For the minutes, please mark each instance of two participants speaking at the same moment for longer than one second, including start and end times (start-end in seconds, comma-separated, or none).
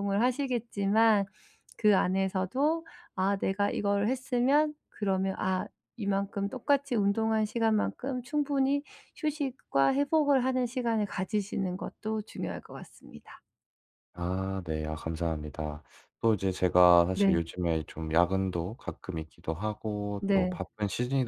none